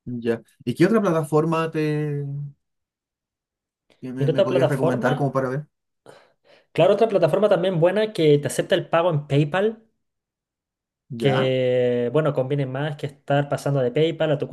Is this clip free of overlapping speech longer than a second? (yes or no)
no